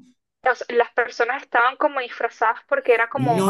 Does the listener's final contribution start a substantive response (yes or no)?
yes